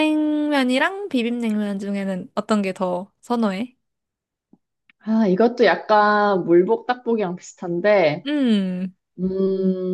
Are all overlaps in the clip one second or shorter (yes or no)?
yes